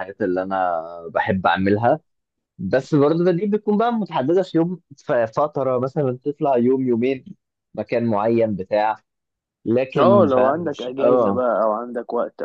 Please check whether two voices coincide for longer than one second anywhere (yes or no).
yes